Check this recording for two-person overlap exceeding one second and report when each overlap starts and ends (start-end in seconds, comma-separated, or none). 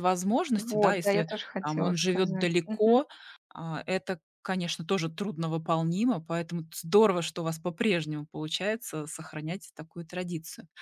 0.6-3.0